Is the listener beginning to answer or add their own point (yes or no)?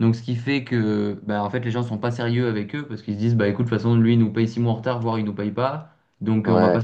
no